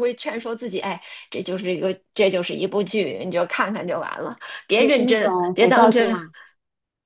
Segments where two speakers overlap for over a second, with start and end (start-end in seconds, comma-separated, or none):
4.8-6.2